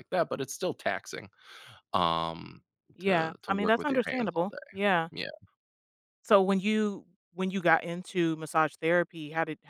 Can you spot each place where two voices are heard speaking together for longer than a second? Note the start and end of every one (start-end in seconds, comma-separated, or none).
3.0-4.8